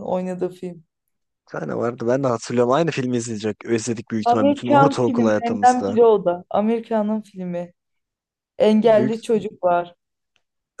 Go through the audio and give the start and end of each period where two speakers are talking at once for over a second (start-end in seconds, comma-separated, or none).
4.2-6.0